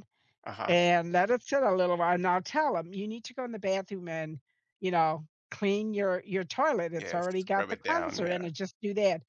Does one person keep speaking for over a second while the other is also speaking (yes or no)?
yes